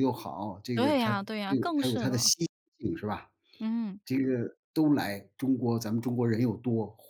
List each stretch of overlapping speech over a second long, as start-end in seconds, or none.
0.7-2.3